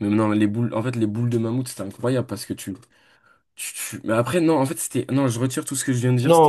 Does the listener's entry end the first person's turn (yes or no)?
yes